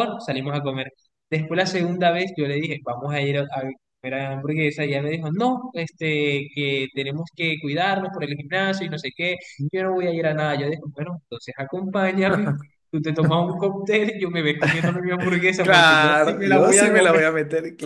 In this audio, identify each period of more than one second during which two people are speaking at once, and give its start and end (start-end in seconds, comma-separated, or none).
15.6-17.2